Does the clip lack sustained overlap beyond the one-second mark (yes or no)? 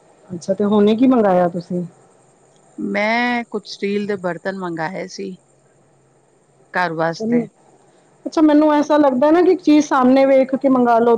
yes